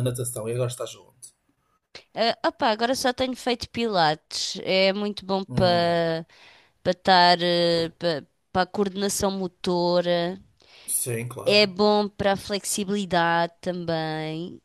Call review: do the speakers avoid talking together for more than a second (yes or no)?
yes